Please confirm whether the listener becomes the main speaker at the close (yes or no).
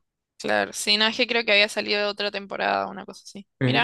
no